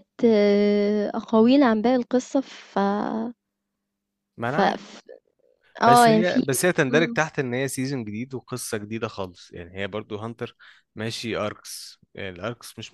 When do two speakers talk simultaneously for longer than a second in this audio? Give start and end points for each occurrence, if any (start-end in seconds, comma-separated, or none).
none